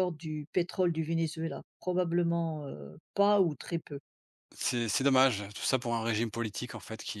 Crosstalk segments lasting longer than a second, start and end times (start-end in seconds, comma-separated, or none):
none